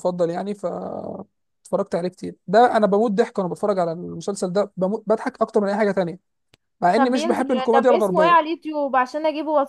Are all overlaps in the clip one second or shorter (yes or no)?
no